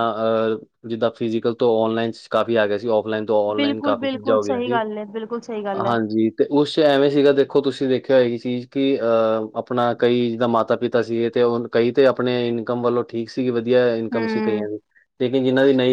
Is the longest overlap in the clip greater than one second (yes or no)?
yes